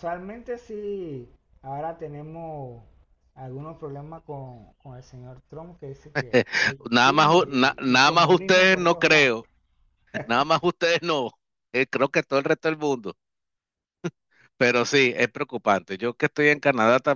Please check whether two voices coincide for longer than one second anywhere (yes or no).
yes